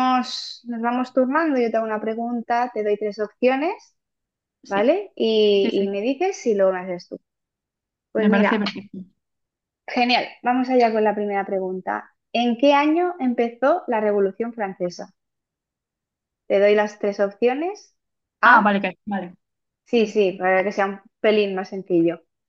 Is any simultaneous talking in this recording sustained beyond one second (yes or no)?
no